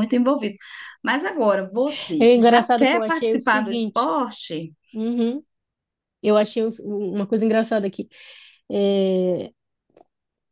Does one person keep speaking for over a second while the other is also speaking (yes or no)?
yes